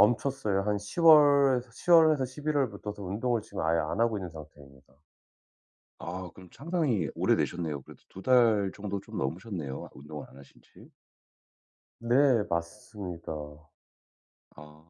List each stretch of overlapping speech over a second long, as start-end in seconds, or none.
none